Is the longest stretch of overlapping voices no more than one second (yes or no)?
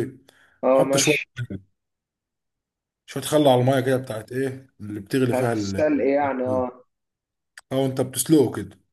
yes